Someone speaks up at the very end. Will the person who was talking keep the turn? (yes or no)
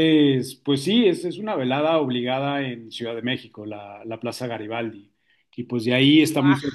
yes